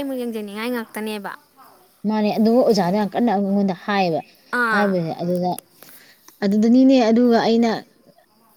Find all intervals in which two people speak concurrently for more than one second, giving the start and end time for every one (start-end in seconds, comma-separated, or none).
none